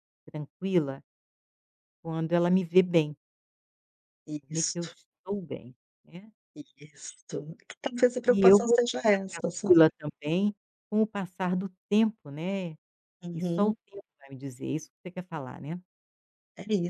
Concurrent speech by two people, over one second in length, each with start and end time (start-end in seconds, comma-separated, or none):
8.3-9.8